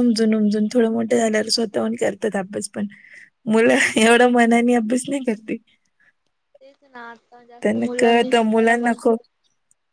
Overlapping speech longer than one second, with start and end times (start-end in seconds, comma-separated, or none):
7.6-9.1